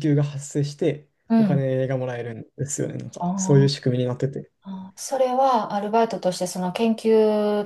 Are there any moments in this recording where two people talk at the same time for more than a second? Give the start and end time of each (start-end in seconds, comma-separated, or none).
none